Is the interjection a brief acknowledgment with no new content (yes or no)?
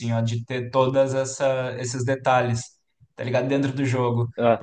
yes